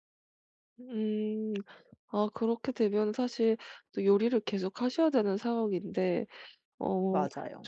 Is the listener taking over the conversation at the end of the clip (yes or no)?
no